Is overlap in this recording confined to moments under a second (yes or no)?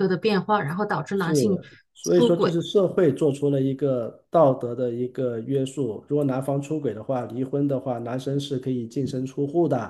yes